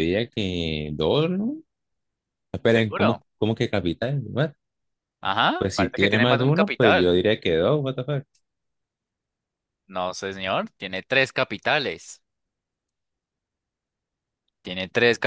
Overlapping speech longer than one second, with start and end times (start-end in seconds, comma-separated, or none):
5.6-7.2